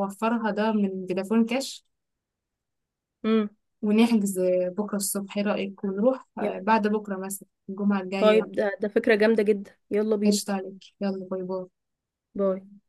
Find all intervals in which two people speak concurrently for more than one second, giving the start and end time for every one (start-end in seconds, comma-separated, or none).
none